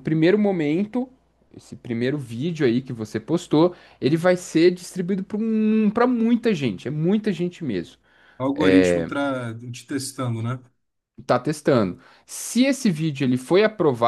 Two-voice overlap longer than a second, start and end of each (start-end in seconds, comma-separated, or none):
none